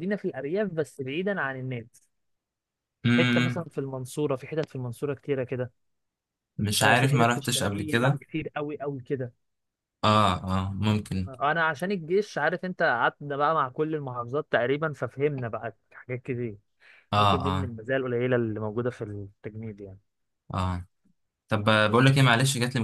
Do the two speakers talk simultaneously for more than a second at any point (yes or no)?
yes